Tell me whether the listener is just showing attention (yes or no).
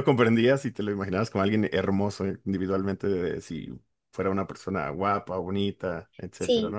no